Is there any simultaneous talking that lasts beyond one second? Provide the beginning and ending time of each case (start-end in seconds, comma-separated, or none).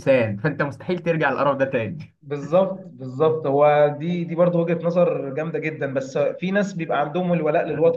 none